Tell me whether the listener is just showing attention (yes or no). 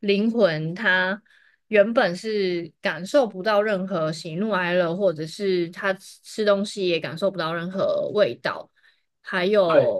yes